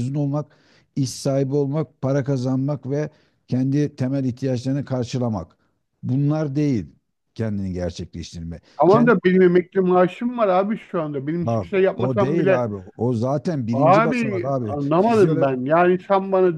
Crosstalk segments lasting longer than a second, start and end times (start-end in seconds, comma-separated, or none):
11.4-12.7, 13.7-15.5